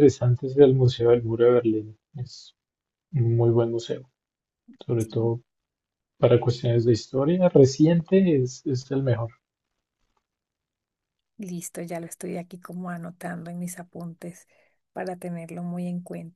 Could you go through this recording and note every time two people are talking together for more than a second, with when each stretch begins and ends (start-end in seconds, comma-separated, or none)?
none